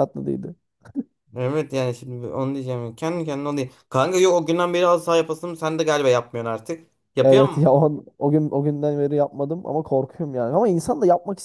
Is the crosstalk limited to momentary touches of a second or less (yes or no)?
yes